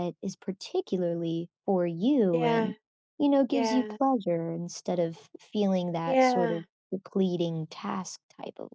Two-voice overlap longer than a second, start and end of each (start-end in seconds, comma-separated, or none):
none